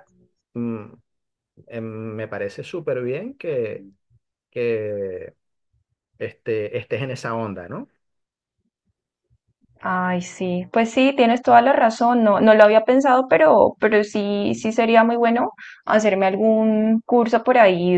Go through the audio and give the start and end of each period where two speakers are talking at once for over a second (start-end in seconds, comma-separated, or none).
none